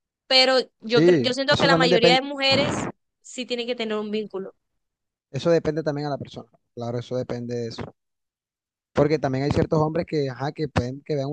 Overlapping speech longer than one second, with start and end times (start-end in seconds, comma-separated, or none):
0.9-2.2